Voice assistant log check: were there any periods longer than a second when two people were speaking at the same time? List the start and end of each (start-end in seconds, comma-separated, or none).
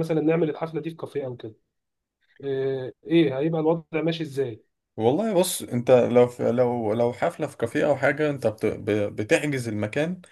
none